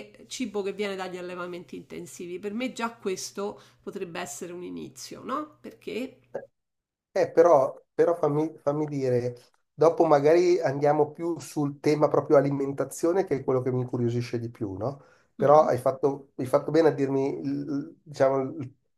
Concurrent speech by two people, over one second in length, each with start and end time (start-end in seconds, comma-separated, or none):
none